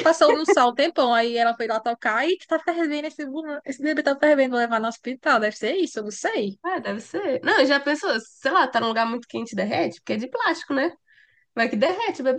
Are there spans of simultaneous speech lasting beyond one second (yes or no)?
no